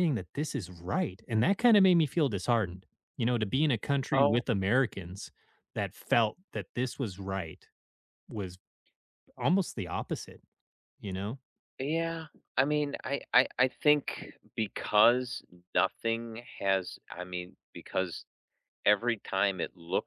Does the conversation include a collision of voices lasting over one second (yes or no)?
no